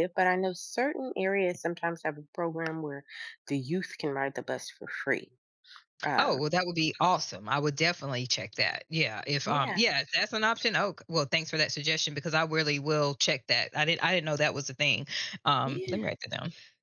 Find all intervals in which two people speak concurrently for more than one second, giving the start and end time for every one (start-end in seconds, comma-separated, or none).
none